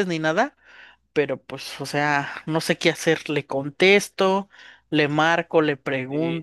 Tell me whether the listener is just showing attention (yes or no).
no